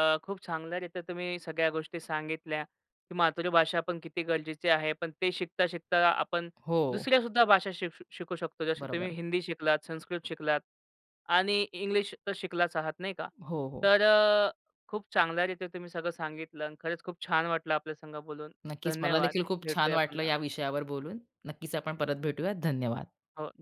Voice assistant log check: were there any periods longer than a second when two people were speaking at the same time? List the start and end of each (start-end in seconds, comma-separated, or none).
18.7-20.3